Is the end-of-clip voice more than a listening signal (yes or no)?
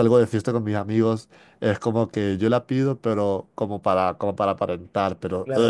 yes